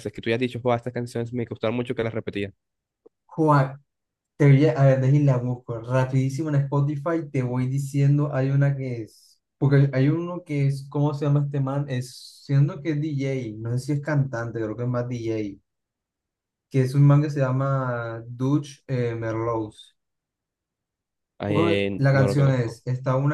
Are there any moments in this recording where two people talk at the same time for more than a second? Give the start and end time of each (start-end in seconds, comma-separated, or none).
21.5-22.8